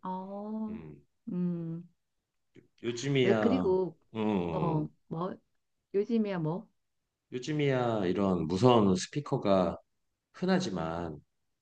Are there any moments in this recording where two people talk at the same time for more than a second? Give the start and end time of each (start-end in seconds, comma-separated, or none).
none